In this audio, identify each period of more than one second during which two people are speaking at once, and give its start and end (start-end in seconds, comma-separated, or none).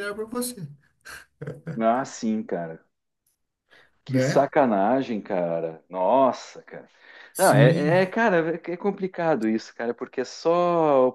none